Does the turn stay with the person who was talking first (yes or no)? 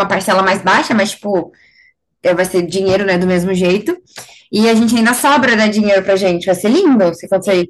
no